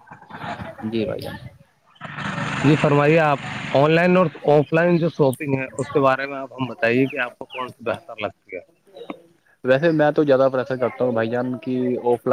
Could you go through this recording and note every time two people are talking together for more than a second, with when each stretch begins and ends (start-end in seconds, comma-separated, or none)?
none